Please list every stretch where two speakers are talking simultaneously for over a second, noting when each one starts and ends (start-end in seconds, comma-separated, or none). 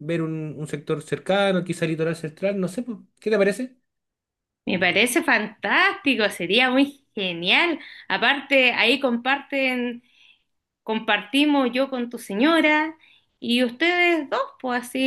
none